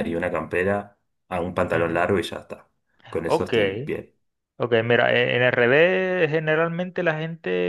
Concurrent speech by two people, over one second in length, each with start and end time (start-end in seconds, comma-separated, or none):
none